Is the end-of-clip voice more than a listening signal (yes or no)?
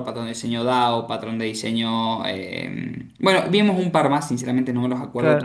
yes